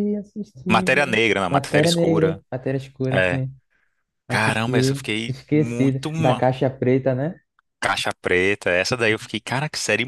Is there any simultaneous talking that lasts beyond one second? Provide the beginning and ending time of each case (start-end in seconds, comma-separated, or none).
0.7-2.4, 4.3-6.4